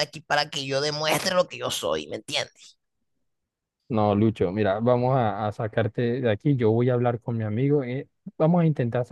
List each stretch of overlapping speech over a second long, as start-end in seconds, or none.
none